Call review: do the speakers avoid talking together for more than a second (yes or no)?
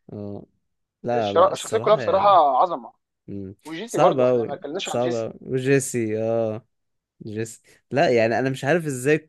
no